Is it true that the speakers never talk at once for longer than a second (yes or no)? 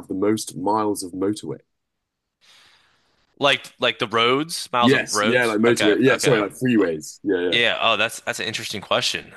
no